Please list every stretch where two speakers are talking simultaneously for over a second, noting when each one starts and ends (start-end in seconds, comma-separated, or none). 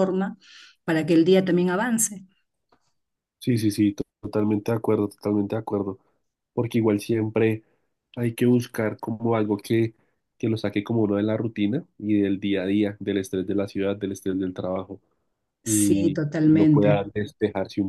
15.6-17.1